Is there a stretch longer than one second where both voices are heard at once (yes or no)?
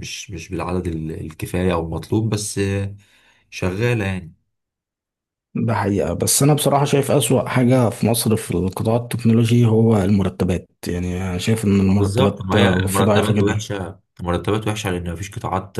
yes